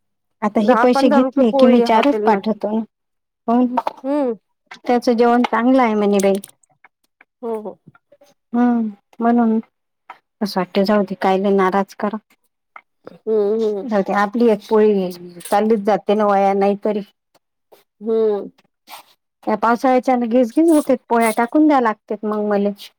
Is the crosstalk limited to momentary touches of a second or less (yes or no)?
no